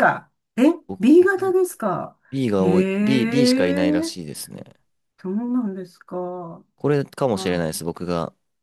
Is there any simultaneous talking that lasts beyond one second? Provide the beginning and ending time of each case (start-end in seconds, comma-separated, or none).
2.5-4.1